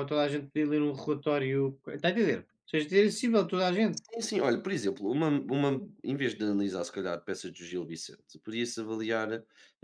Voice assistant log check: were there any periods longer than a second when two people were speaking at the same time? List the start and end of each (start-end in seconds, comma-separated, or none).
none